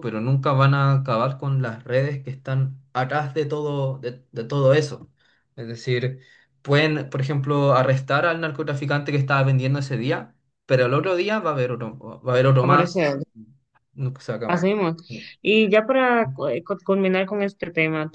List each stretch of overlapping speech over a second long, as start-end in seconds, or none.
none